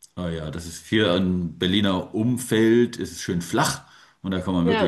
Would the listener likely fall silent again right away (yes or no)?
yes